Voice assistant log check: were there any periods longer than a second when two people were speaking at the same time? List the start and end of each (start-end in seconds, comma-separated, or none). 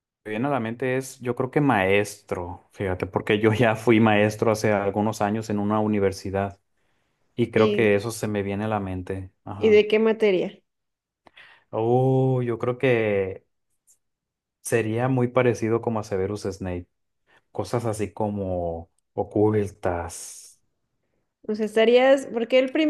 none